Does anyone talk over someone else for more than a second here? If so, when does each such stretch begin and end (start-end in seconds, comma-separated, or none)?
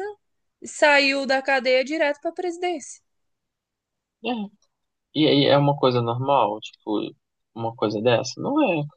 none